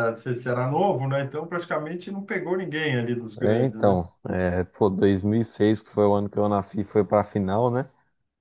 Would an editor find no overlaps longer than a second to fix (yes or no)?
yes